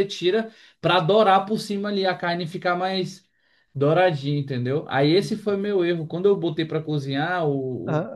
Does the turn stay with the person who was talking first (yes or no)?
yes